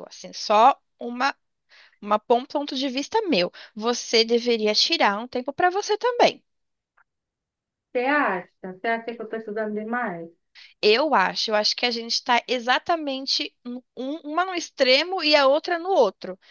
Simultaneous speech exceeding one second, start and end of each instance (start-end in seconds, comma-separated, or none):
none